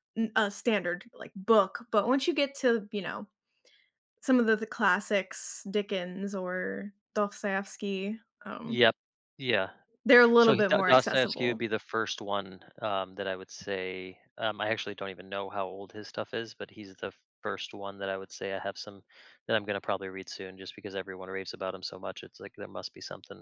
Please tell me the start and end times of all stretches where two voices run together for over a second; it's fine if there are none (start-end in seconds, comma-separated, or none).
10.4-11.6